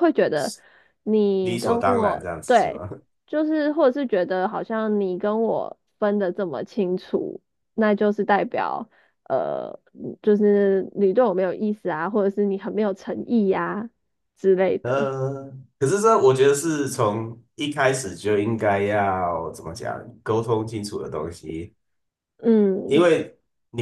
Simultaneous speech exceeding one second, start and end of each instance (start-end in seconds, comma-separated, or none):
1.4-2.8